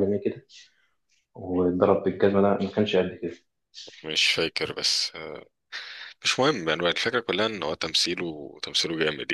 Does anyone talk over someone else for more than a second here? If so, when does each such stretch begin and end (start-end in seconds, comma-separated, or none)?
none